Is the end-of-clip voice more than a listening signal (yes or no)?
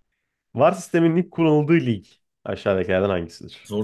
no